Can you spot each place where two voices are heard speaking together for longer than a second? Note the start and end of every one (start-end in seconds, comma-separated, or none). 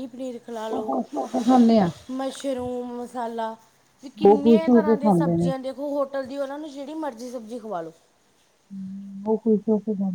4.2-5.5